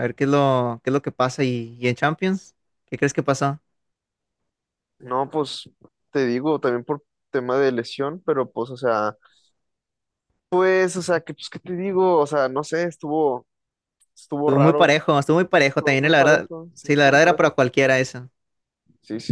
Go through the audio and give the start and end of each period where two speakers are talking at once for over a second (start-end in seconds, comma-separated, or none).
15.6-17.6